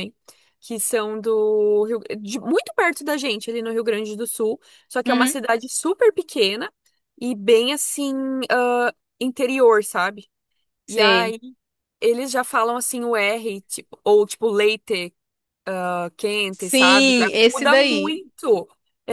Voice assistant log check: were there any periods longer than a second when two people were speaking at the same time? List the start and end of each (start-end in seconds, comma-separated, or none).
16.5-18.2